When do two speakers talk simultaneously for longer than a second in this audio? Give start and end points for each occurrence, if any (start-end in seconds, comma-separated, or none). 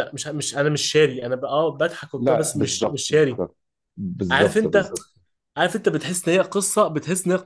2.2-3.4